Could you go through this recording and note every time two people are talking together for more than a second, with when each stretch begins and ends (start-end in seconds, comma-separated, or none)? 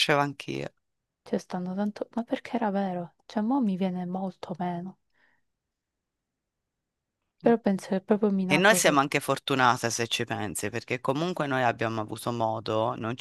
none